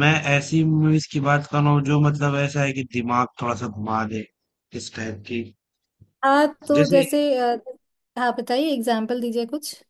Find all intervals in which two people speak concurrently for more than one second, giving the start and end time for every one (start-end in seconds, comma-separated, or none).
none